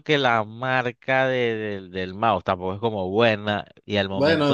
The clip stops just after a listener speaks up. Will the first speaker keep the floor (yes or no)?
no